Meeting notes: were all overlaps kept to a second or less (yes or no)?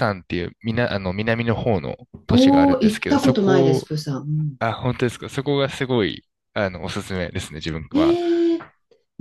no